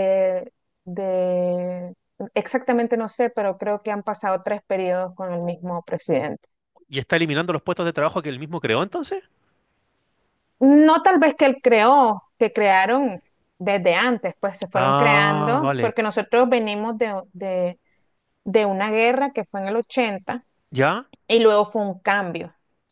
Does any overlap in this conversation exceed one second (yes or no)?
yes